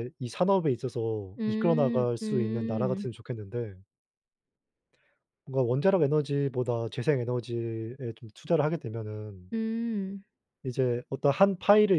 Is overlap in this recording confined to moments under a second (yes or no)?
no